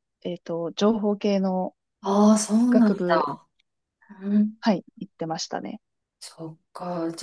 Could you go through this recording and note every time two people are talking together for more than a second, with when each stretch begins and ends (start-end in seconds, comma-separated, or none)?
none